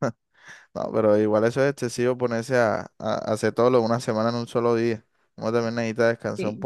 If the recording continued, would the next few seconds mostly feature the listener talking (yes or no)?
yes